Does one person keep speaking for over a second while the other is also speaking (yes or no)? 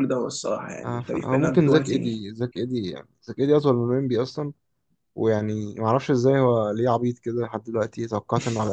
yes